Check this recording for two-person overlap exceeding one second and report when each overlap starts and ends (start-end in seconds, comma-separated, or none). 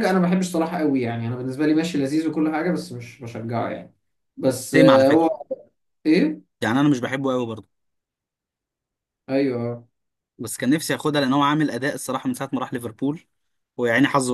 none